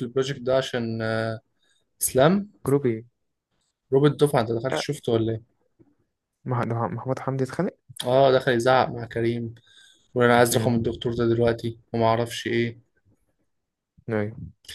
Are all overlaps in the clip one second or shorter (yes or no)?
yes